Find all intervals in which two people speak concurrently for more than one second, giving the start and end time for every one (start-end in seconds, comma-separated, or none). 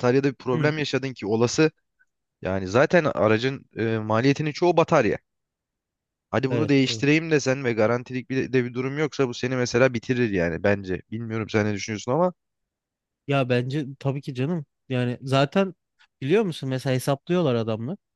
none